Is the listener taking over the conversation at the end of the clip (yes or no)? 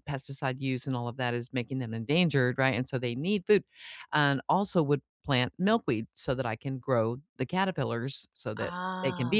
no